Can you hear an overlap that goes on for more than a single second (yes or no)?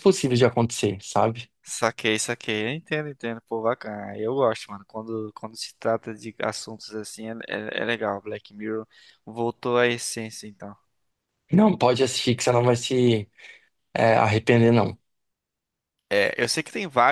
no